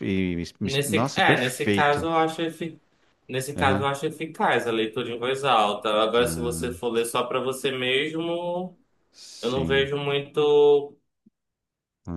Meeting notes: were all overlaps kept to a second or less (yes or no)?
no